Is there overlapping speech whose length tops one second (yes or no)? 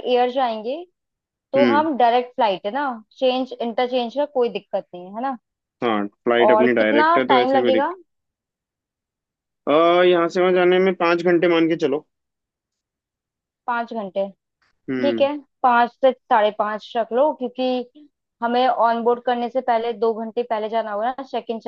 yes